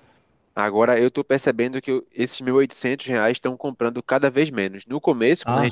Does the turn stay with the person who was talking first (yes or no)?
yes